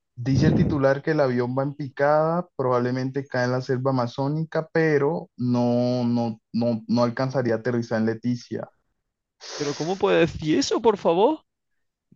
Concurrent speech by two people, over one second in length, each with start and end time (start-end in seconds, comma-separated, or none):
none